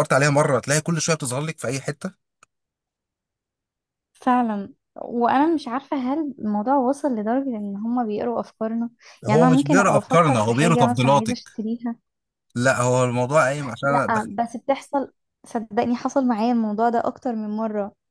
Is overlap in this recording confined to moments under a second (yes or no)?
no